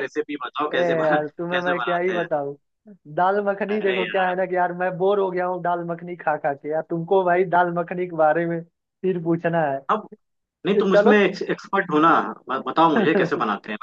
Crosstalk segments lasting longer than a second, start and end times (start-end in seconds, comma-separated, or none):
0.7-2.2